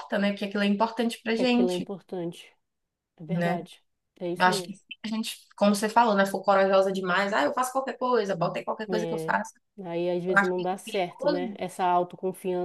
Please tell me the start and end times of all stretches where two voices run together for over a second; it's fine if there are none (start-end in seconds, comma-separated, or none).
10.3-11.6